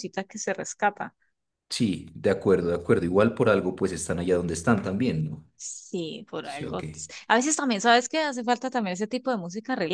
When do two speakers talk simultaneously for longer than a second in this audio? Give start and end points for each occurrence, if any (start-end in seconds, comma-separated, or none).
none